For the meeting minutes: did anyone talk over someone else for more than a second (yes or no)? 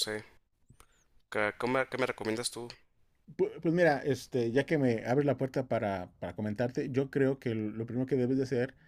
no